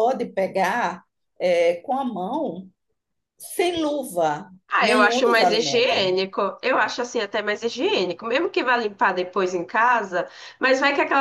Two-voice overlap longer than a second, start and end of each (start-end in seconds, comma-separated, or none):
4.7-6.0